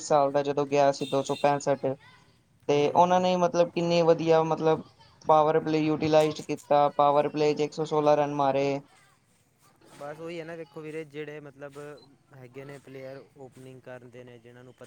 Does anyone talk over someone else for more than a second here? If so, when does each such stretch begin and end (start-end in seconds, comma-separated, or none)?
none